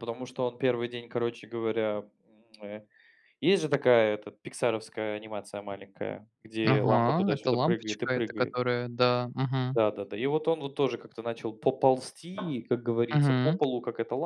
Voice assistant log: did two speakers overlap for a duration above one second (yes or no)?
yes